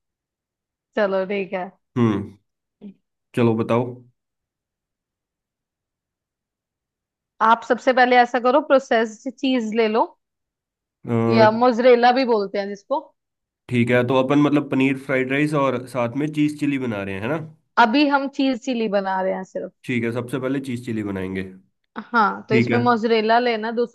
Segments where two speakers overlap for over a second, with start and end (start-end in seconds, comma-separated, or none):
none